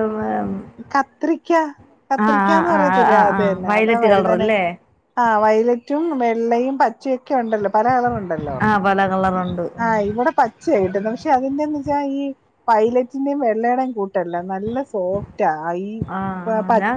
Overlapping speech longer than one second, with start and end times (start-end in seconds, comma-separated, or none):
2.2-4.5